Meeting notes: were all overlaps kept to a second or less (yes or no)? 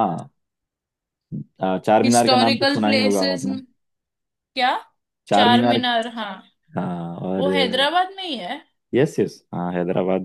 no